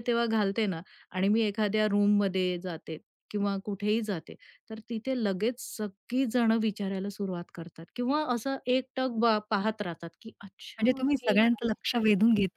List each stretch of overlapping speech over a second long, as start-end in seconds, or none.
10.8-12.0